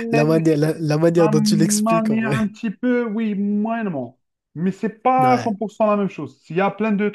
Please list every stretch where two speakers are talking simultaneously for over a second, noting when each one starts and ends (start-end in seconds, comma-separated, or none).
1.2-2.4